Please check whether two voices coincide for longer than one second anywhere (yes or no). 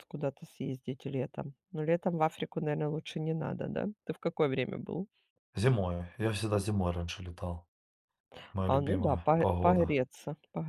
yes